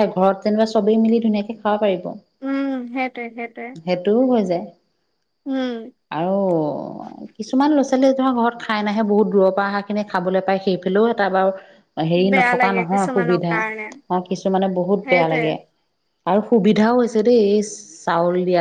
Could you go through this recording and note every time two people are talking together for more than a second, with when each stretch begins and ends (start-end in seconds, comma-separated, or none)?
12.3-13.8